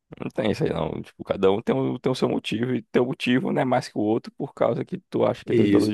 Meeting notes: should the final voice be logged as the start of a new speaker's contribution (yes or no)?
yes